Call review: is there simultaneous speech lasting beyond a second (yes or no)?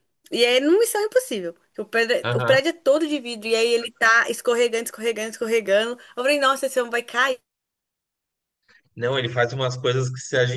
no